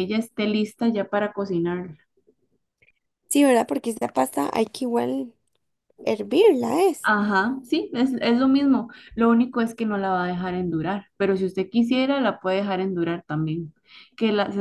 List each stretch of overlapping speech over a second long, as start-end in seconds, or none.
none